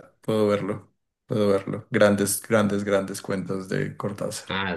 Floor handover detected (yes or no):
yes